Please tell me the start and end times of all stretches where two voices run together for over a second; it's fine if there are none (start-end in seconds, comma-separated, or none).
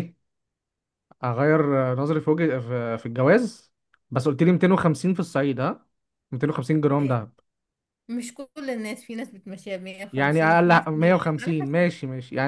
10.1-11.8